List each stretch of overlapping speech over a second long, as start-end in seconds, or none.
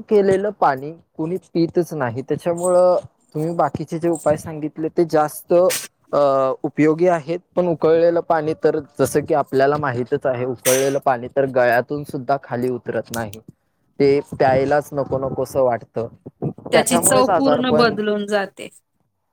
16.7-18.0